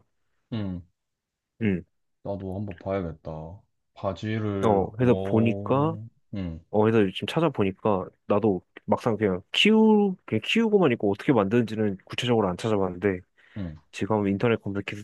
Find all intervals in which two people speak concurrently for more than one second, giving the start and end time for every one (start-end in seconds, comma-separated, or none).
4.6-6.0